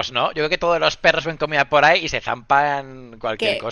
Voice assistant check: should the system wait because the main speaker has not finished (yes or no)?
no